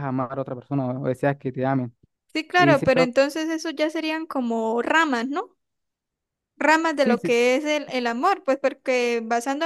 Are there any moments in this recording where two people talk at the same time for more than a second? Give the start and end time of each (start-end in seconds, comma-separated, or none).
none